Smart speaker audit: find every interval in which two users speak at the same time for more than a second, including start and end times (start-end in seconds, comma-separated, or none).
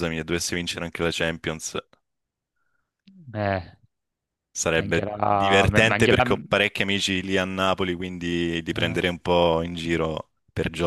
4.7-6.2